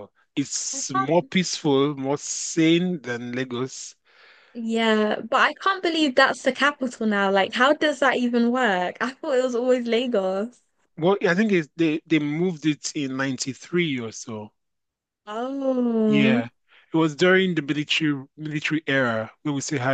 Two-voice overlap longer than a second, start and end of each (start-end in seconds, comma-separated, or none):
none